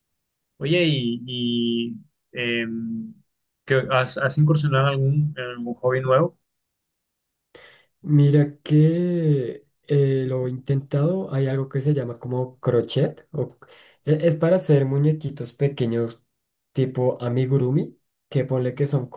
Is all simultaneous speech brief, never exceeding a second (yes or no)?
yes